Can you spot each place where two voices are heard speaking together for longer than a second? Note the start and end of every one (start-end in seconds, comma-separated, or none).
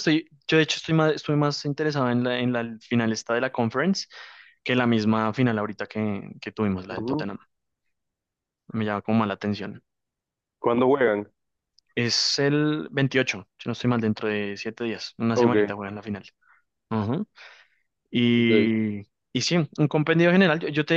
none